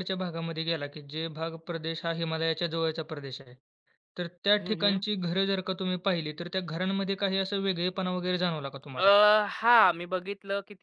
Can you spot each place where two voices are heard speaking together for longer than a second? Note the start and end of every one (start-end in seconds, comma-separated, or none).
none